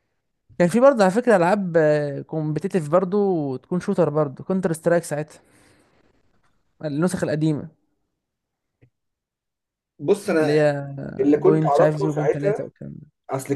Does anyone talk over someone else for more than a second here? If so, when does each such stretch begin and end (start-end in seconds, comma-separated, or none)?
11.4-12.6